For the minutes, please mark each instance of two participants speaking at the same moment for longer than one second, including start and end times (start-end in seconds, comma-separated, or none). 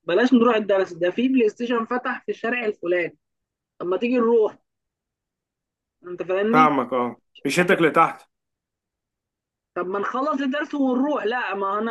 none